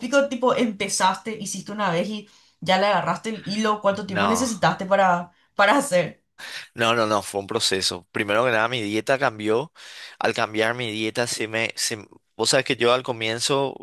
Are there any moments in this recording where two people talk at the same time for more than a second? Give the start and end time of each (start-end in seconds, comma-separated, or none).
none